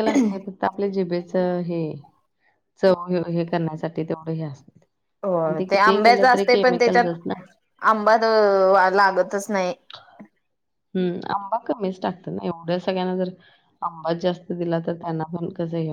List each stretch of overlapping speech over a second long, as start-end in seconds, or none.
5.4-7.2